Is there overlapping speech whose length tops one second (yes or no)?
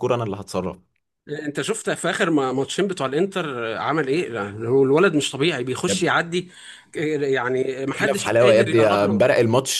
yes